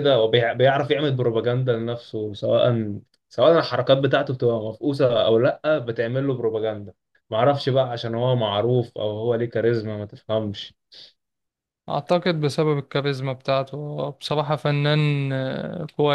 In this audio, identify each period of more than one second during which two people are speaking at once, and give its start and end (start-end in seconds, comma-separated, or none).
none